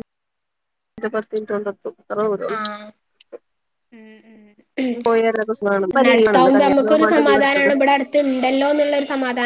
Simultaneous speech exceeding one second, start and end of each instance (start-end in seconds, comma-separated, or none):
5.9-7.7